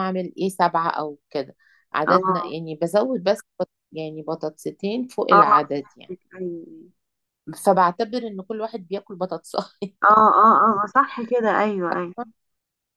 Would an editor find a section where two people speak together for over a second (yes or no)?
no